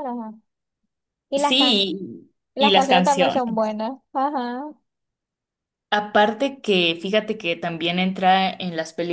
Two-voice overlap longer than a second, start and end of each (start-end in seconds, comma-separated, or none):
2.5-3.8